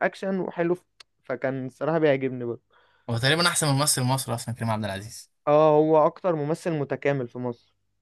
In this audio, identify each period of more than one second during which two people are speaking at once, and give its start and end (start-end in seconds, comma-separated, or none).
none